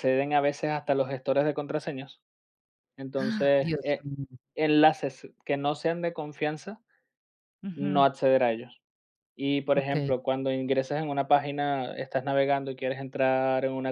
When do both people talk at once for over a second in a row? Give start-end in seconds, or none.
none